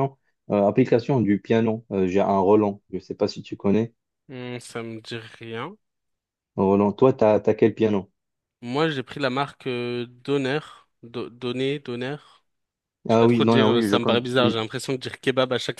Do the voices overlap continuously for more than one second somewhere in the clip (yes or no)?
yes